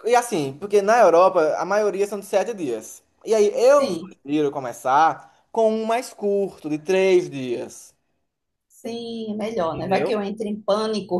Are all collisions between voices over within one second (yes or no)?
yes